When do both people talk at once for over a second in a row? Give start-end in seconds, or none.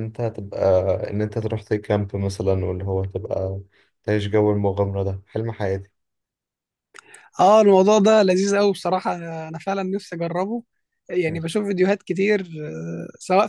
none